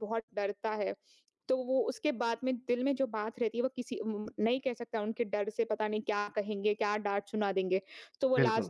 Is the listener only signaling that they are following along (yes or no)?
yes